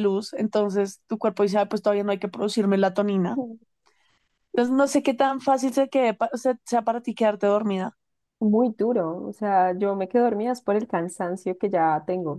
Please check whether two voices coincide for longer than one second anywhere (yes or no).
no